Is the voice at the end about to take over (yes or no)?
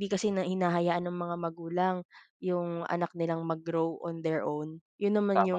no